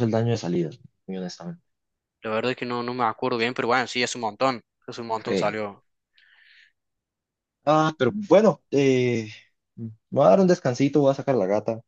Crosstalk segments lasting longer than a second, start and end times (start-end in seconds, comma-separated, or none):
none